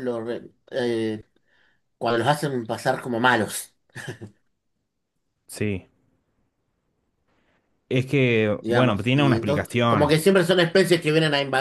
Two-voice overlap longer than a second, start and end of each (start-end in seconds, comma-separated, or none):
8.6-10.2